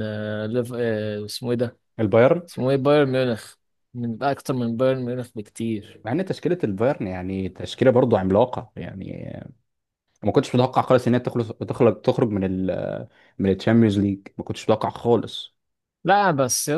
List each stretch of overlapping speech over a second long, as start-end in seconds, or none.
none